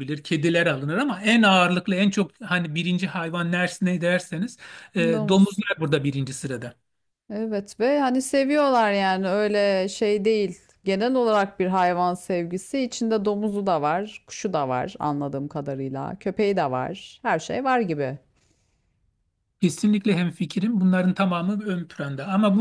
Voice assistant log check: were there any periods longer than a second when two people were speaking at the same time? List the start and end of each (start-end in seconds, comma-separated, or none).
none